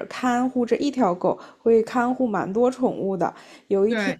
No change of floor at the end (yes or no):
yes